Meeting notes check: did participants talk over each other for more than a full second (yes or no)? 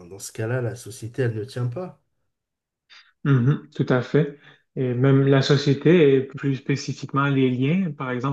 no